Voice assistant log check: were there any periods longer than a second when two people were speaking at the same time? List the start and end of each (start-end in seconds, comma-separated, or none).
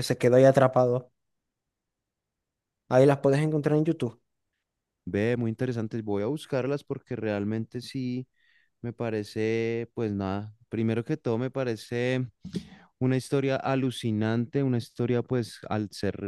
none